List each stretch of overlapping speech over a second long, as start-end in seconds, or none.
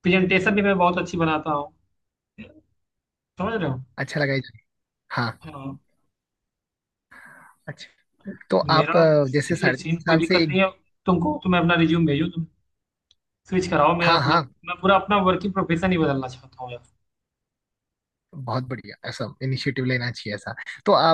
8.7-10.6